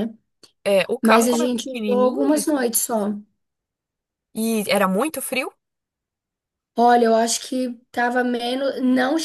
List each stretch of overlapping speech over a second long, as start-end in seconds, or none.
1.0-2.3